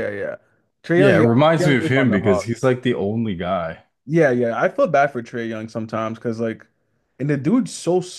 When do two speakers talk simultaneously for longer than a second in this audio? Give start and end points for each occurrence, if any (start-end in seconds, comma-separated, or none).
0.9-2.5